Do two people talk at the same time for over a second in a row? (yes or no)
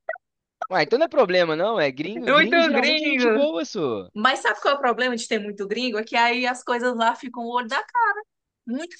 yes